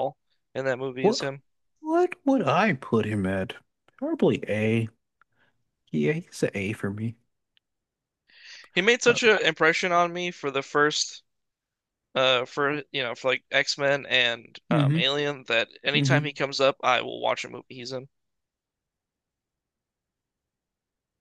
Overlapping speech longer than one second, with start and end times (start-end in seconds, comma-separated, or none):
none